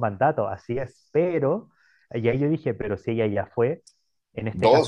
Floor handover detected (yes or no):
no